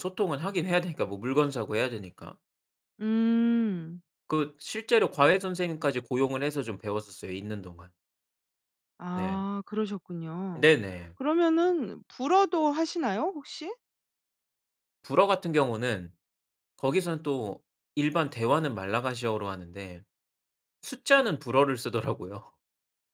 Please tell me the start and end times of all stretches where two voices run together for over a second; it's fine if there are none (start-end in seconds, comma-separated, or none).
none